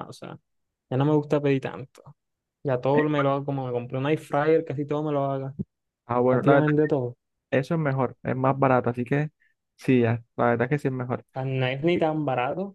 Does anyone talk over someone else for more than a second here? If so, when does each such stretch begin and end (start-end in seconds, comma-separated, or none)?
none